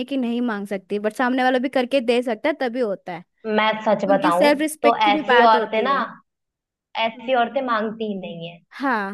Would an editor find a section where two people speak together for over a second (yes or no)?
yes